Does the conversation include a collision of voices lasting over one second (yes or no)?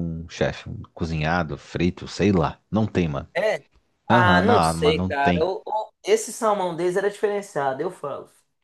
yes